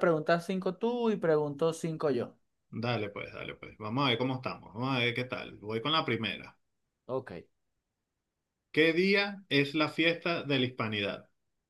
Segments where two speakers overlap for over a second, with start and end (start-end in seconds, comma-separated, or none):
none